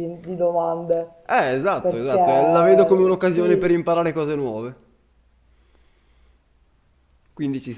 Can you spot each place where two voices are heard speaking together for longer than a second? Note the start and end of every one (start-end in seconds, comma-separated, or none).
1.8-3.8